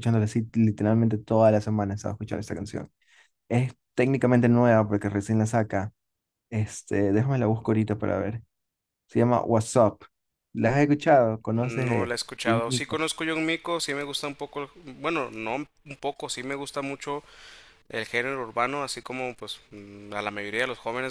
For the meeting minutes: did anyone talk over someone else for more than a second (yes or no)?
yes